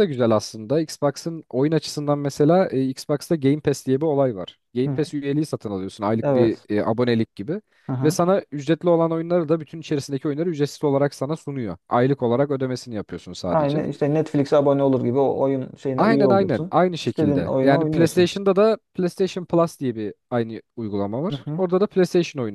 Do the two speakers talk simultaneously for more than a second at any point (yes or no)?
yes